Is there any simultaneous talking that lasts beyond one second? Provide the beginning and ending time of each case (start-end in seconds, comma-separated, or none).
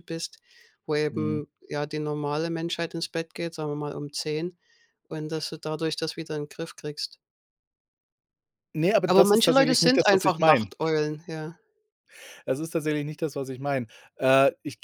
9.0-10.7